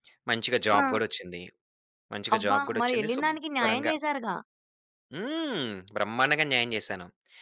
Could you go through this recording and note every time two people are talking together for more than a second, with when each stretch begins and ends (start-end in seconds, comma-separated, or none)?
2.4-3.9